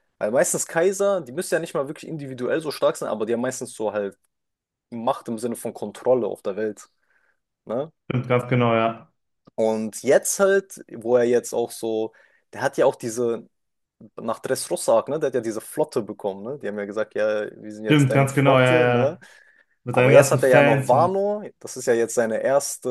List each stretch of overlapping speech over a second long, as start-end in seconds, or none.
17.9-19.2, 19.9-21.2